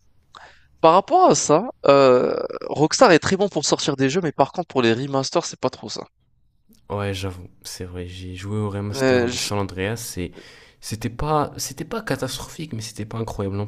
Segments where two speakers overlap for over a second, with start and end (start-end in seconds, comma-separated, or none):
none